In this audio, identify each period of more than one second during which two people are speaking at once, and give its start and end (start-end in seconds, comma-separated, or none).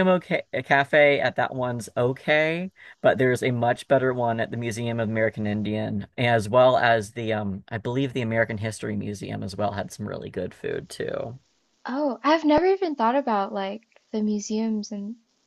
none